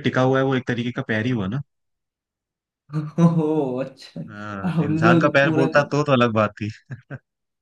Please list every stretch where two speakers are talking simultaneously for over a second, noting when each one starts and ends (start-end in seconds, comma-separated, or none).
4.3-5.7